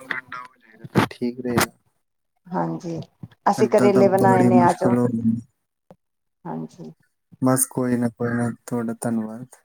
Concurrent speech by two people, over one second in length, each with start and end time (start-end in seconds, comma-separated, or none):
3.6-4.9